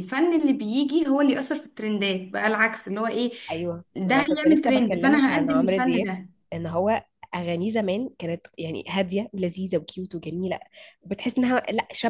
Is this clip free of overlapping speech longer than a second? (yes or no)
no